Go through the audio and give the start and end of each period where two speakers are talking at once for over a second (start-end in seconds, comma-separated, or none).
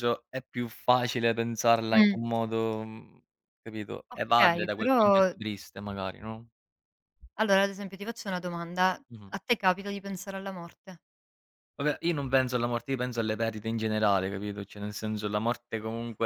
4.1-5.3